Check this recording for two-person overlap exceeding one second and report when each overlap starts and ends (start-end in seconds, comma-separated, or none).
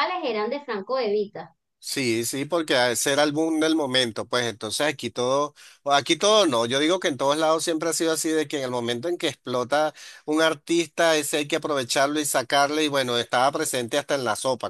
none